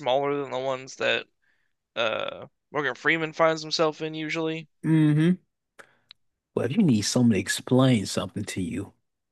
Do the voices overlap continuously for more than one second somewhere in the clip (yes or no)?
no